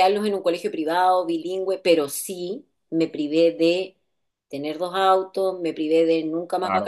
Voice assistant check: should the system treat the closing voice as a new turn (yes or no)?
no